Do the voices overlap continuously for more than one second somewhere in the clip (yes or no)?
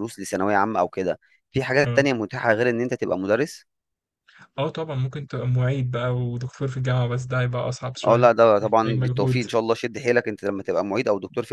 yes